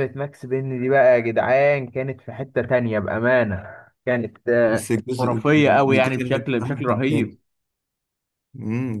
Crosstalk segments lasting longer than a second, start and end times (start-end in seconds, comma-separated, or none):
4.7-7.4